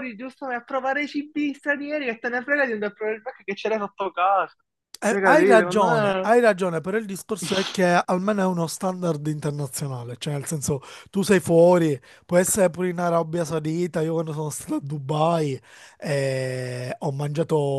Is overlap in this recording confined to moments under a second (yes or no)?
no